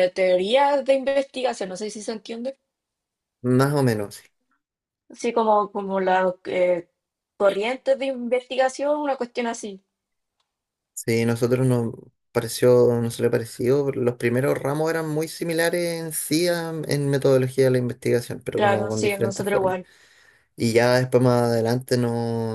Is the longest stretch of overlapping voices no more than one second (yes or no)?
no